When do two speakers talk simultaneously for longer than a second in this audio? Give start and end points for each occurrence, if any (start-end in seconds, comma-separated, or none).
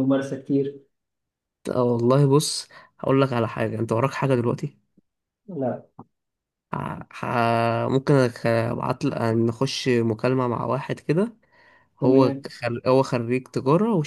none